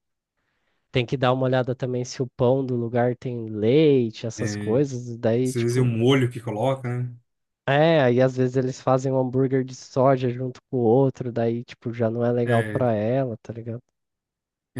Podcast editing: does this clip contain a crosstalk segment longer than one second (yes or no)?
no